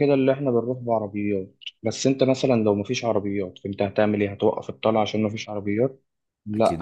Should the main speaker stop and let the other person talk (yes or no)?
no